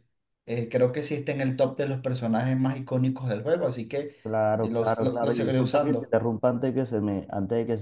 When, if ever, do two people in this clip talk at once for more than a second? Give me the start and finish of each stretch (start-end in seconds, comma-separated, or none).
4.5-6.2